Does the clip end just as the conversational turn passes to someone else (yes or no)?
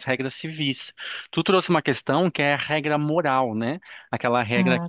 no